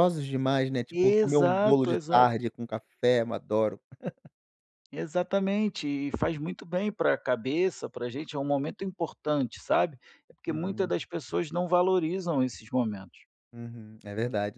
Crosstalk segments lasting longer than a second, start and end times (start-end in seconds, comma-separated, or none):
0.9-2.3